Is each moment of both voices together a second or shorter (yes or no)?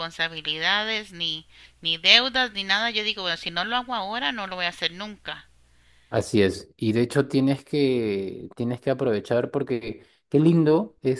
yes